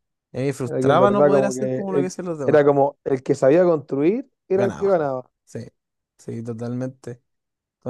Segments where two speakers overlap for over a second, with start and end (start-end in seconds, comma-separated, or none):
0.7-2.6